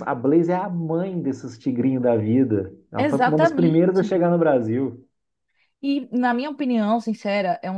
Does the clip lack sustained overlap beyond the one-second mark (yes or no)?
no